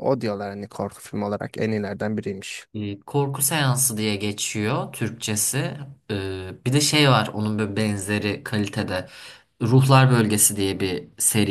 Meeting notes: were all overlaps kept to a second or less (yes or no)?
yes